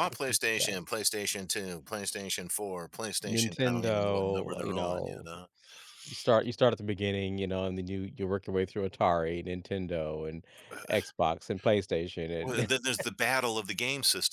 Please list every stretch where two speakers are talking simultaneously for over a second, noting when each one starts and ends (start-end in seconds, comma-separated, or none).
3.3-5.3